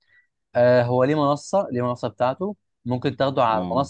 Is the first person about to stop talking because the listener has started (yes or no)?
no